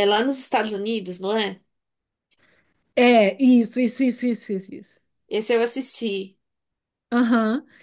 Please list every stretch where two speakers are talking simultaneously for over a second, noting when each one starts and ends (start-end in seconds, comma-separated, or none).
none